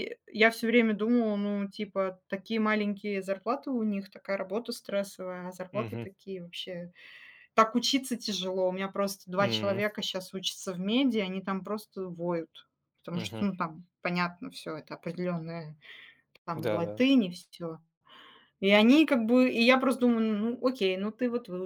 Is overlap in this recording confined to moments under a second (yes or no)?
yes